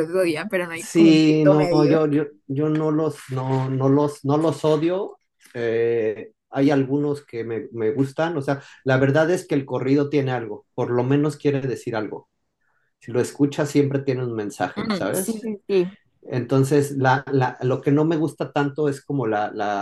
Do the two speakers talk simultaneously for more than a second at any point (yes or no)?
yes